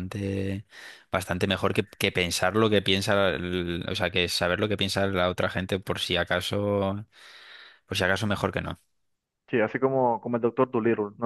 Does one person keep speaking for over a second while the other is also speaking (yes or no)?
no